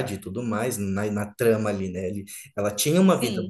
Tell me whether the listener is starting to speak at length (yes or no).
no